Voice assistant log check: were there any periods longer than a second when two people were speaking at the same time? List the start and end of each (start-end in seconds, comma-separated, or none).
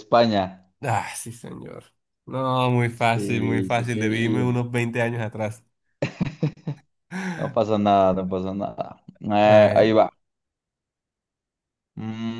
2.9-4.6